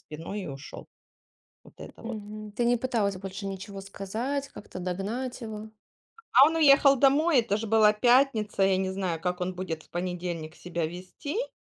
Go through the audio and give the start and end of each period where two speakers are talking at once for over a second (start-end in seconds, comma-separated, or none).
none